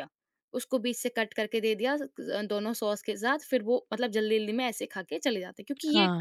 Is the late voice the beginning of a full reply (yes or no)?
yes